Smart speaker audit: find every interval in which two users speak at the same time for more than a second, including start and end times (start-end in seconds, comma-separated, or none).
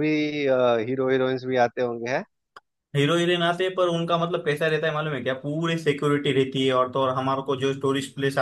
none